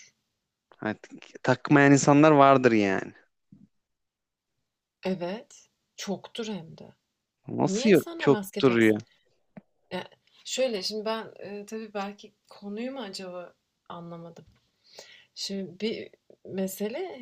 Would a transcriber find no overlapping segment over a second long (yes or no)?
no